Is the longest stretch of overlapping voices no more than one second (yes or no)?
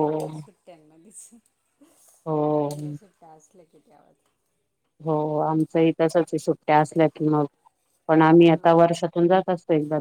yes